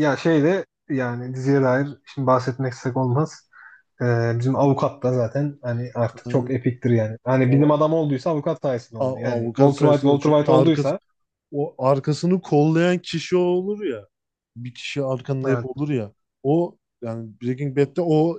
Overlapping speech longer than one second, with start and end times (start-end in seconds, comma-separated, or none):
9.0-10.9